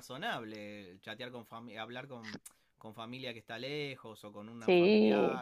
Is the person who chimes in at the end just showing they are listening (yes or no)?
yes